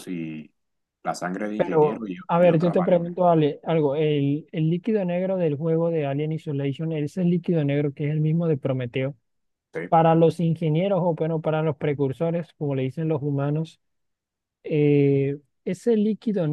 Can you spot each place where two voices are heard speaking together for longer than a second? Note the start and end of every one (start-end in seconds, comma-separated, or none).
1.6-3.1